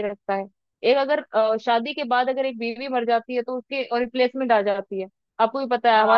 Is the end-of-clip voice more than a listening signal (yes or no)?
yes